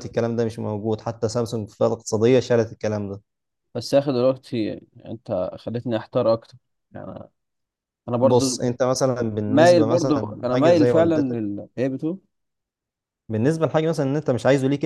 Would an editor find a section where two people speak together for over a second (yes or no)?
yes